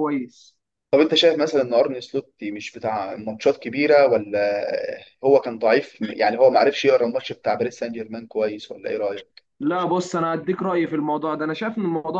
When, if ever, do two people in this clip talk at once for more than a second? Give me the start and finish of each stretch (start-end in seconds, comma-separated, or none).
none